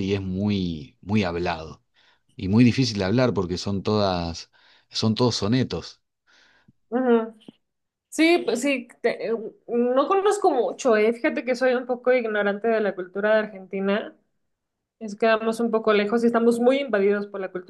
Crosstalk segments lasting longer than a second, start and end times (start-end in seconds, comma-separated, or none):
none